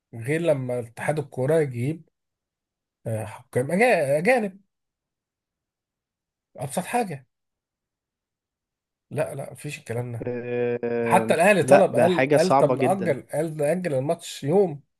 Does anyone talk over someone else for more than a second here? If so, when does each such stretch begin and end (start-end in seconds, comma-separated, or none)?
11.0-13.2